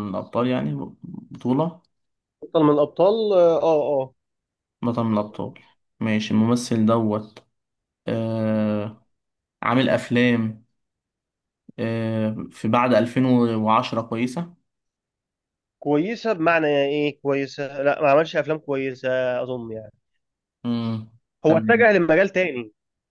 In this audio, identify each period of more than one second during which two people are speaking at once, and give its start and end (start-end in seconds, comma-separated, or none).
none